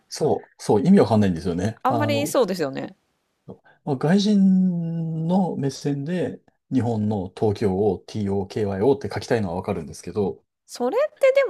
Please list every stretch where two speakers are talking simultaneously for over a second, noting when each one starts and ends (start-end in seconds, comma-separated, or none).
none